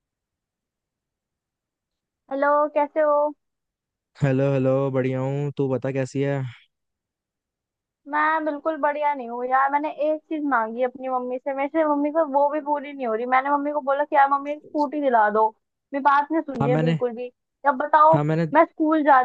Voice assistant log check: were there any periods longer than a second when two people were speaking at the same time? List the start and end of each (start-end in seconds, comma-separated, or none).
none